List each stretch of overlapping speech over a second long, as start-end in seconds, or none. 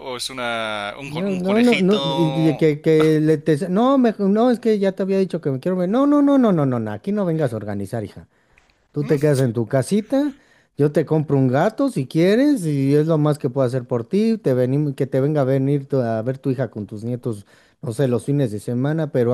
1.0-2.7